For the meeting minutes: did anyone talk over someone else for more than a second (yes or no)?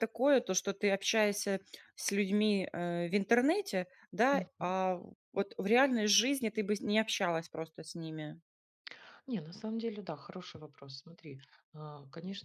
no